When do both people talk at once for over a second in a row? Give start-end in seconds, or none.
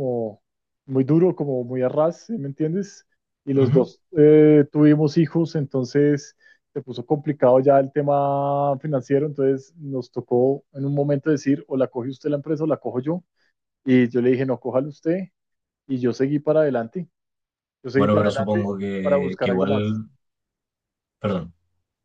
17.9-20.0